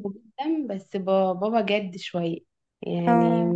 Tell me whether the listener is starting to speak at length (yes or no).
no